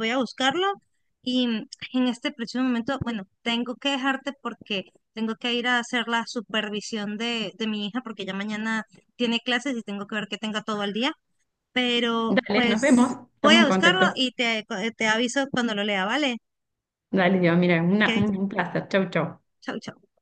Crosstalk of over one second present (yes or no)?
yes